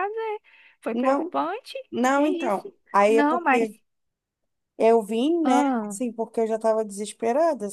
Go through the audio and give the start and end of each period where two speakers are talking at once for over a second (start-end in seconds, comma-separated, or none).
2.1-3.7